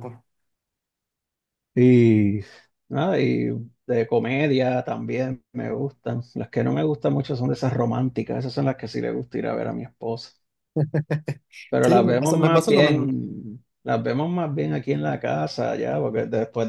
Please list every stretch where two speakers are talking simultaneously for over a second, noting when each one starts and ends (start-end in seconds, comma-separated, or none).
11.8-13.1